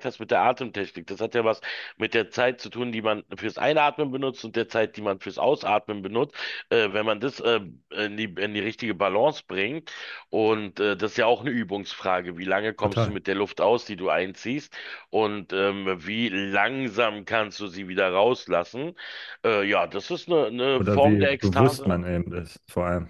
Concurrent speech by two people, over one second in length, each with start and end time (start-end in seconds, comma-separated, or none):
20.8-22.0